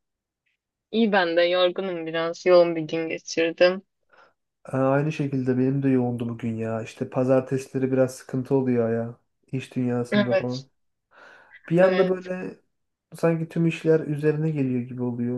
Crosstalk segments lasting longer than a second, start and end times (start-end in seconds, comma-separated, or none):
none